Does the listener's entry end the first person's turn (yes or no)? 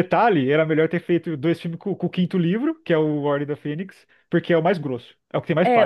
yes